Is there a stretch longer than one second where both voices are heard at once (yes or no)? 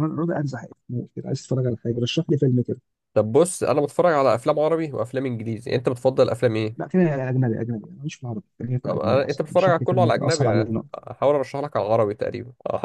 yes